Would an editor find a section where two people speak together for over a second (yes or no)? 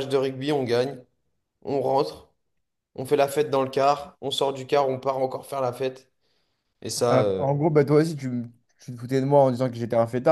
no